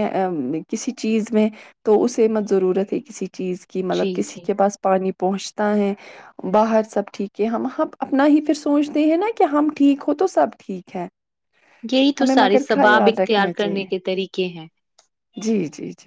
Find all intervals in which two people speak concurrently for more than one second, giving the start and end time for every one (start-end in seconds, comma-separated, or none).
12.2-13.9